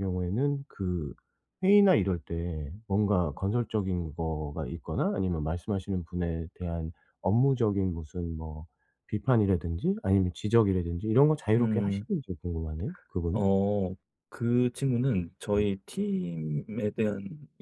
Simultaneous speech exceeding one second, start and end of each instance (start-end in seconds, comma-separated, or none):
none